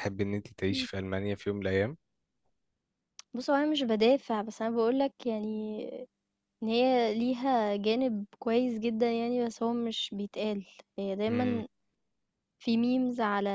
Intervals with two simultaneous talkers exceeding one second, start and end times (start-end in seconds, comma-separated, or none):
none